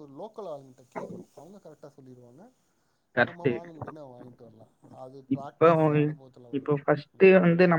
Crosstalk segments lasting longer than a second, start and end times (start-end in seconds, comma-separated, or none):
none